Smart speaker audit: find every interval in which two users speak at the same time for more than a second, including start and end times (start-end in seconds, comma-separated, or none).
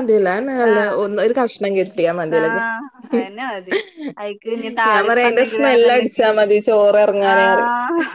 4.9-6.2